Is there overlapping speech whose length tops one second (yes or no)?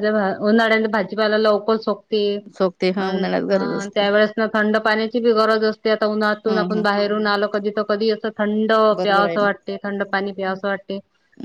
no